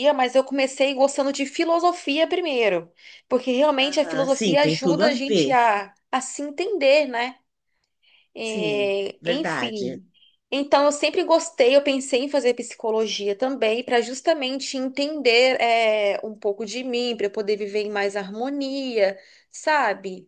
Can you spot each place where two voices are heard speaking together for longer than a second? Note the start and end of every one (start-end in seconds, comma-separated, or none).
3.8-5.5, 8.4-10.0